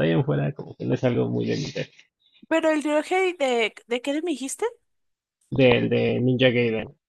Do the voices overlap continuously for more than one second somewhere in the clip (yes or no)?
no